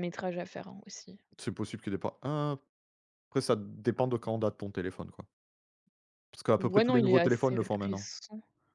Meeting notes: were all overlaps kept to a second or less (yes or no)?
no